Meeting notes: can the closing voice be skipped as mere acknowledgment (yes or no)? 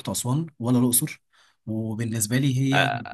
yes